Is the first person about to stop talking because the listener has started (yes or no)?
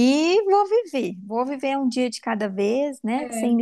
no